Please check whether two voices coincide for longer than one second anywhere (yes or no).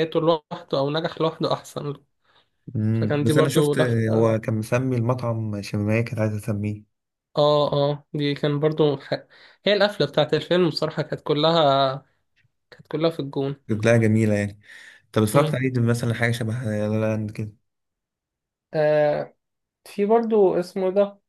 yes